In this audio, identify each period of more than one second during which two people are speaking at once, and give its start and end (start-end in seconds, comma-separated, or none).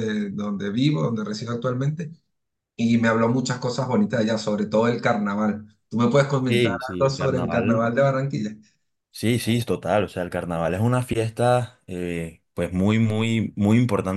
6.5-7.9